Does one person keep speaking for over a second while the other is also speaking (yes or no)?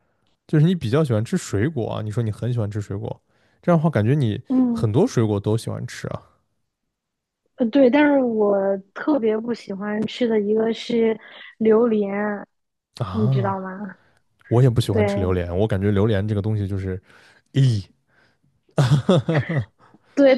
no